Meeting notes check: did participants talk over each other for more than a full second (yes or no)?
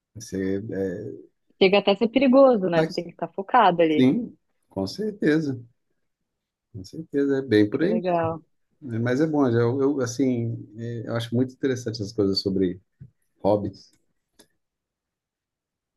no